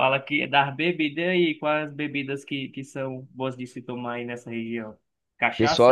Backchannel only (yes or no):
no